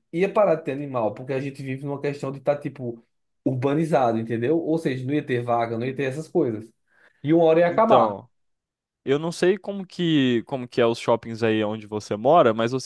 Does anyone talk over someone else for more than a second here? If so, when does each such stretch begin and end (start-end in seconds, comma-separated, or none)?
none